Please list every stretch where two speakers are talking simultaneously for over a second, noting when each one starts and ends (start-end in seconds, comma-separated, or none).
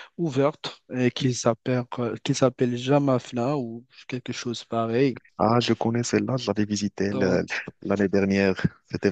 none